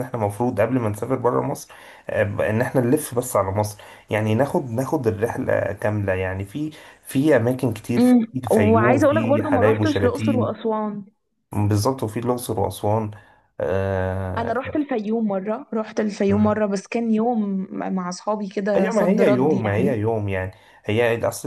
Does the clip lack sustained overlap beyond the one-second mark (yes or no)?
no